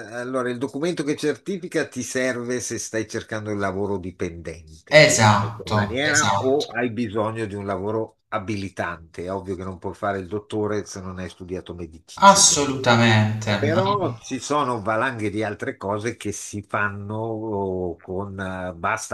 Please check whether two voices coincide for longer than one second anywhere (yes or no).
yes